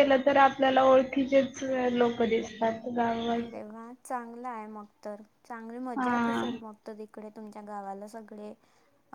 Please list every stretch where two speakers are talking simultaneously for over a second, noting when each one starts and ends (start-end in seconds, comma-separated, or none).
none